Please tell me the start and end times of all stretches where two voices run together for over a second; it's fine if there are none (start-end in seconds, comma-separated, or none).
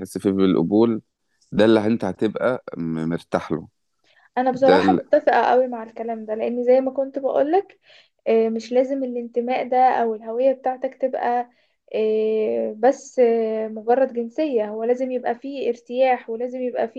none